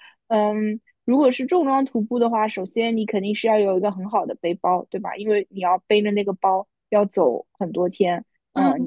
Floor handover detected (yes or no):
yes